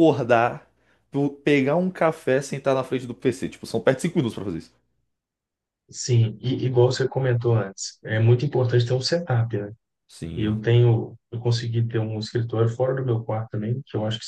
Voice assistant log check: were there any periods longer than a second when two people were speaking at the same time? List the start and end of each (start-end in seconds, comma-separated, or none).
none